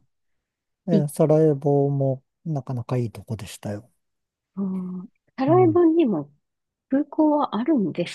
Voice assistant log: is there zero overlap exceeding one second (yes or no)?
yes